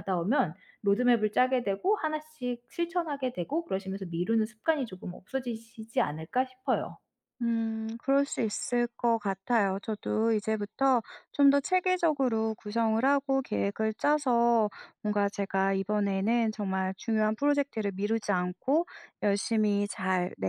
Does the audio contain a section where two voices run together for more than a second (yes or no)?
no